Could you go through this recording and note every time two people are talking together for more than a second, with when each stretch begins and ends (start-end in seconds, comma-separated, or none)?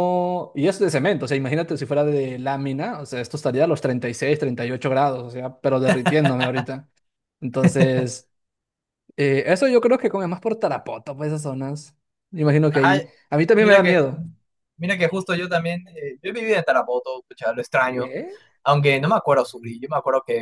none